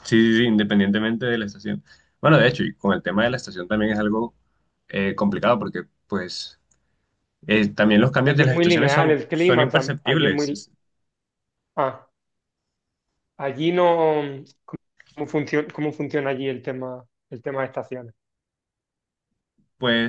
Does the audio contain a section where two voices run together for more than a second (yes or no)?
yes